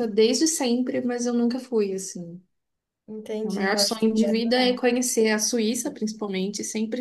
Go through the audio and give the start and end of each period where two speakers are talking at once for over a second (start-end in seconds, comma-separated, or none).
3.4-4.8